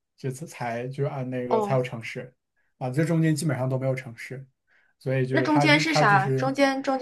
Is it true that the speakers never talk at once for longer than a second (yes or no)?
no